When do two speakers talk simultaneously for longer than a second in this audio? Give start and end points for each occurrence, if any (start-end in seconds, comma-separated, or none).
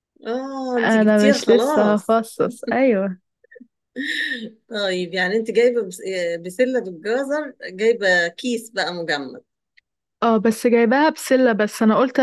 0.8-2.2